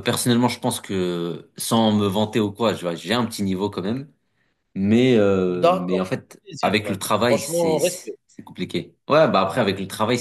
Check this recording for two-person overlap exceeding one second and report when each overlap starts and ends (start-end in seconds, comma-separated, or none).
5.5-8.2